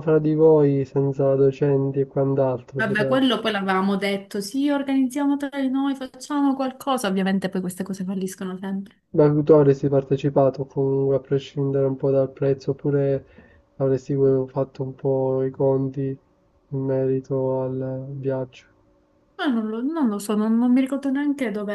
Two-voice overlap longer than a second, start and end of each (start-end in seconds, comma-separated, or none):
none